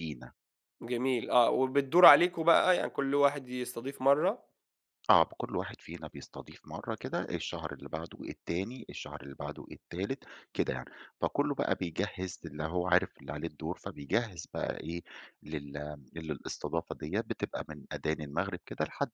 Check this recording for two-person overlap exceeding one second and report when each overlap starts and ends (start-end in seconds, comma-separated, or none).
none